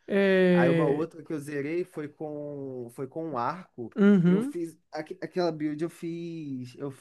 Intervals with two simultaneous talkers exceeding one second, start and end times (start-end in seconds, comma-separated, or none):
none